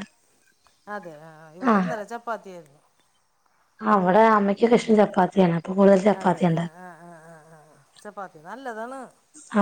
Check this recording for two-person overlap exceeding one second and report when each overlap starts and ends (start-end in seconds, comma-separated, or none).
none